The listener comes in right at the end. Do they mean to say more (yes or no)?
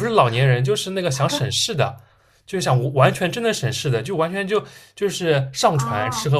no